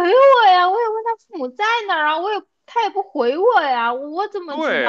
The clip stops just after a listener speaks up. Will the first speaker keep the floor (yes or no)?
no